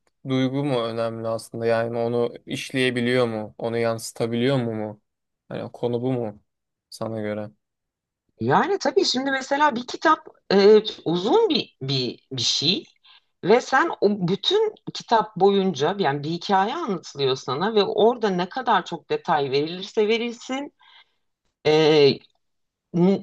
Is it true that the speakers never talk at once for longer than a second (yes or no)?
yes